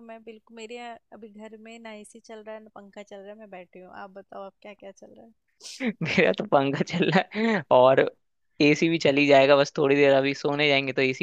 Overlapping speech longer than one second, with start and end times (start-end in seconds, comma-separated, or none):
none